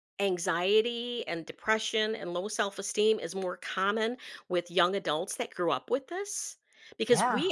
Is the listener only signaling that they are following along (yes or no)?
yes